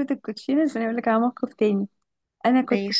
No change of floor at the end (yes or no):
yes